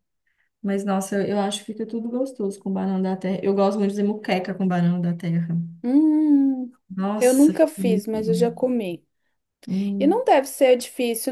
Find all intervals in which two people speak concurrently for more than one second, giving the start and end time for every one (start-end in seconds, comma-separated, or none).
7.2-8.6